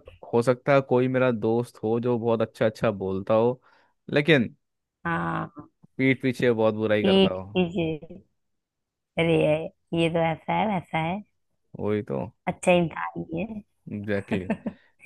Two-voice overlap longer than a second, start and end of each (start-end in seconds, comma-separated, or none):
none